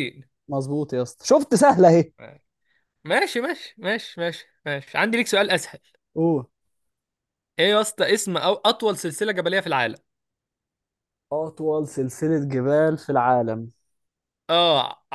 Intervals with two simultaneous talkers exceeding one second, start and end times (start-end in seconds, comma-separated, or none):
none